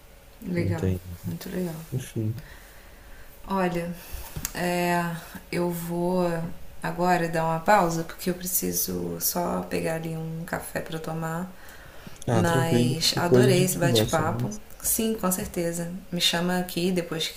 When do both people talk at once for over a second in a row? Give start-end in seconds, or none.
12.3-14.6